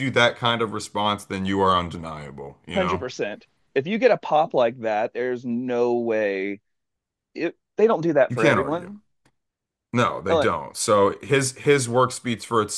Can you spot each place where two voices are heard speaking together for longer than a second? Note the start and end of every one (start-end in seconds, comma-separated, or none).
none